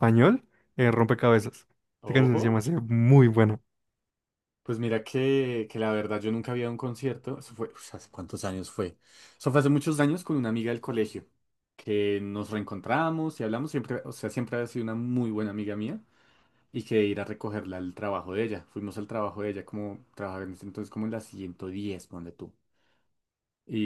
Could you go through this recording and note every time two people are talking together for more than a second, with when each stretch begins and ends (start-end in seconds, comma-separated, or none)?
none